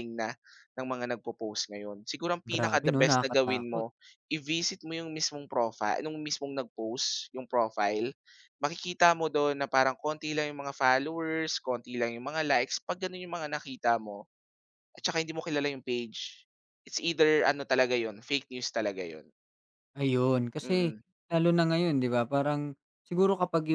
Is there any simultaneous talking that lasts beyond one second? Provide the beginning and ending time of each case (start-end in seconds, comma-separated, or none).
2.5-3.9